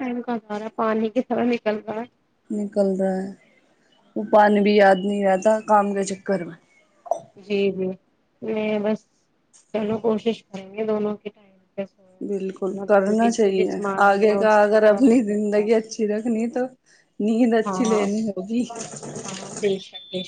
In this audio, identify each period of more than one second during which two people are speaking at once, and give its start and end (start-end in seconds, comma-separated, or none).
12.3-15.7